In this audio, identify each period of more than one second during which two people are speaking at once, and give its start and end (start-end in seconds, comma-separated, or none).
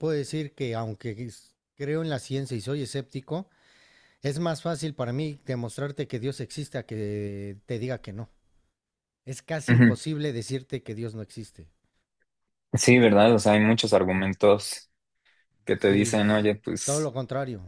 15.8-17.1